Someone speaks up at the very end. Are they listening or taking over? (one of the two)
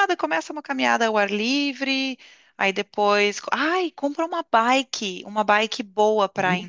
listening